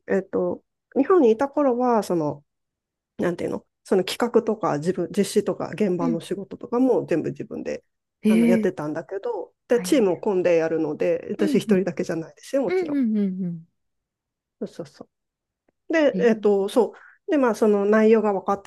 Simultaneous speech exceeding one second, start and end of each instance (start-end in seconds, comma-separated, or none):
none